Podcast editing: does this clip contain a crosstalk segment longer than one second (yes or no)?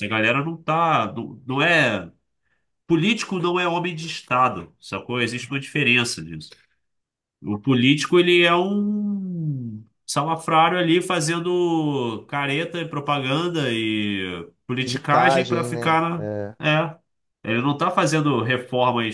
yes